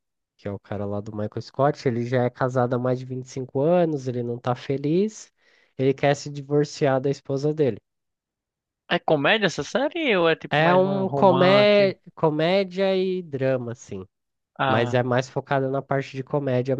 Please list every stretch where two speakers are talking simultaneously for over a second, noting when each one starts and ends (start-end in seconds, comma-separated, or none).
10.5-11.9